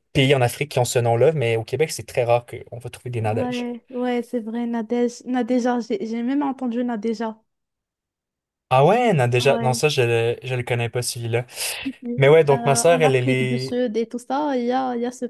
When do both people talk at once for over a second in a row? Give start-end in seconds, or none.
12.5-13.8